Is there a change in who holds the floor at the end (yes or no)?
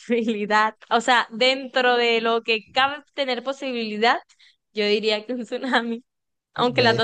yes